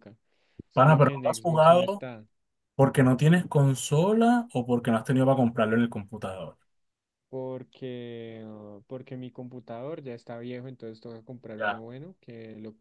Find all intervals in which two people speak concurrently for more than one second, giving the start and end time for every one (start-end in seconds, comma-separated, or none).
0.7-2.0